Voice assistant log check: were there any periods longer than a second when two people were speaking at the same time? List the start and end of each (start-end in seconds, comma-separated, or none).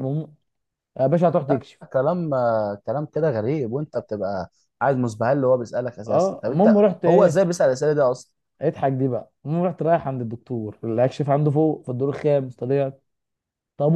6.1-7.4